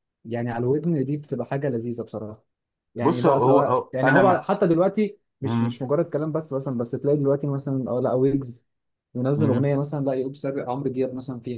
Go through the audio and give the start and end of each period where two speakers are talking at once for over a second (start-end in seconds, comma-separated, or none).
3.0-4.5